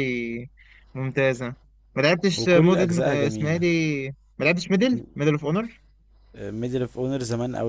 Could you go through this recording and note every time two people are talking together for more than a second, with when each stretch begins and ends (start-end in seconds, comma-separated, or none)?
2.4-3.6